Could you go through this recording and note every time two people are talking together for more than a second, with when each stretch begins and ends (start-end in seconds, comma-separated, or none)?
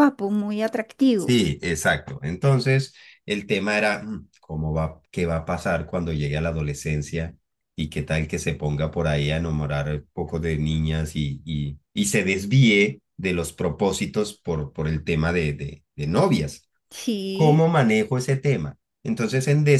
none